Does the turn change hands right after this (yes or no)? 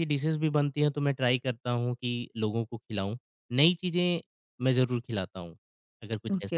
yes